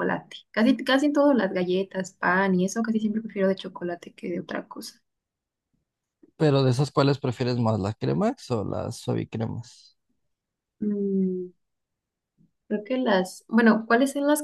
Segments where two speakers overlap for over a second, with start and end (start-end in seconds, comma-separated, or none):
none